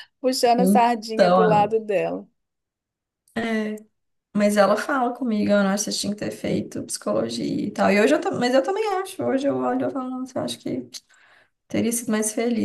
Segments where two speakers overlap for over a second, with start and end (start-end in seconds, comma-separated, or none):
0.6-1.8